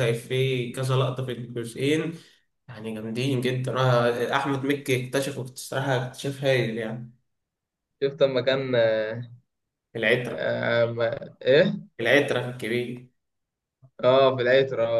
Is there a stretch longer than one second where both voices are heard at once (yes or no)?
no